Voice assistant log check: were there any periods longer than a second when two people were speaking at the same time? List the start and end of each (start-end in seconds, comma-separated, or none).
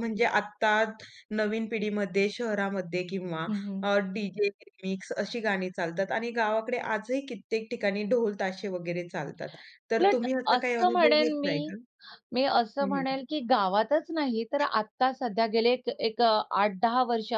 10.0-11.7